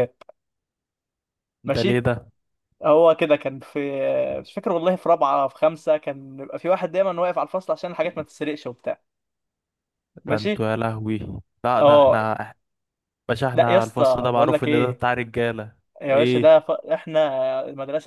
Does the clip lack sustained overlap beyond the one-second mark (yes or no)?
no